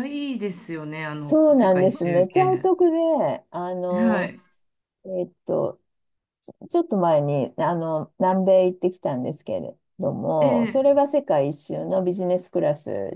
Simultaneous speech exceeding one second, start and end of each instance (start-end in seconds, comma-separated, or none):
1.2-2.7